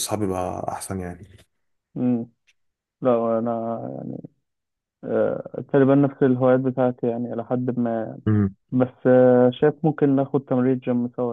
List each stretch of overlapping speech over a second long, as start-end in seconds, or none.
none